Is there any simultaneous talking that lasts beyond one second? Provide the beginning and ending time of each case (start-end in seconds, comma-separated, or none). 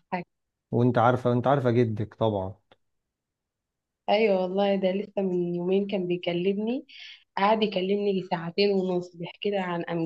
none